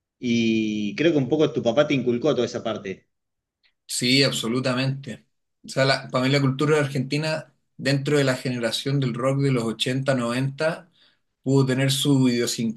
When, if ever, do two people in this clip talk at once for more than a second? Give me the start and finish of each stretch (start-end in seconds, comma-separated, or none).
none